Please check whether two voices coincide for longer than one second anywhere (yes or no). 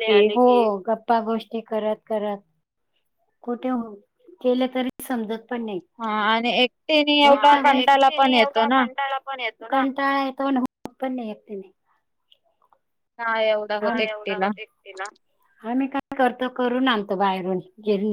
yes